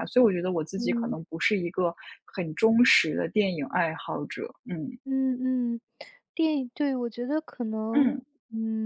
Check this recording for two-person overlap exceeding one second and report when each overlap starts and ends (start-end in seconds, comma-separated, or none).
none